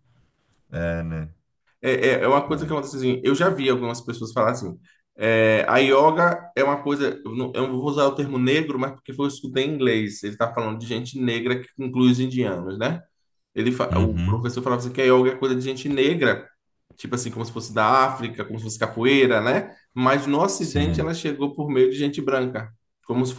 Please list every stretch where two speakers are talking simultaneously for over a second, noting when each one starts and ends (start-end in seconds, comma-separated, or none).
none